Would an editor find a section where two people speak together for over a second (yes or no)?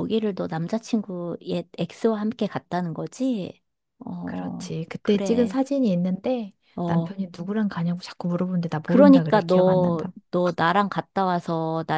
yes